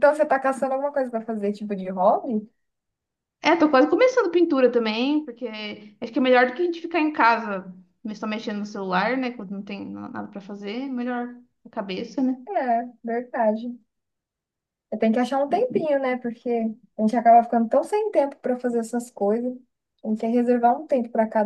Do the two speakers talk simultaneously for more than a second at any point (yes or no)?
no